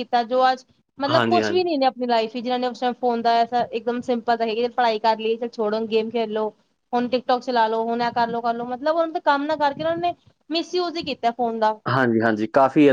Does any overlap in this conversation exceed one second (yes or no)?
no